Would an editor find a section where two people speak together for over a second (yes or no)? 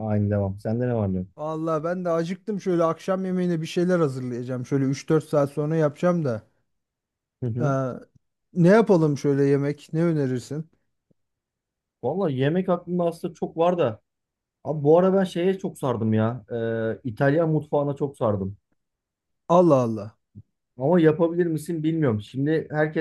no